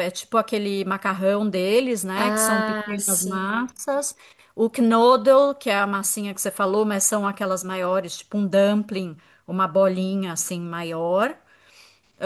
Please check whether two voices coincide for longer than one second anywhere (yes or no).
yes